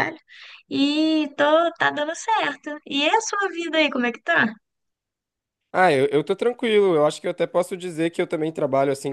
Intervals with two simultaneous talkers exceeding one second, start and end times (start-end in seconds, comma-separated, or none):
none